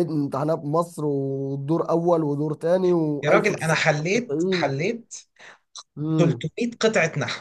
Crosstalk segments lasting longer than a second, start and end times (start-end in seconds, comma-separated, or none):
3.2-4.7